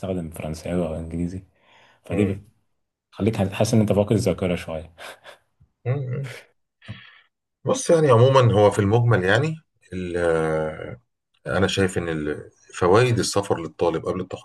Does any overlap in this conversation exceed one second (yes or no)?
no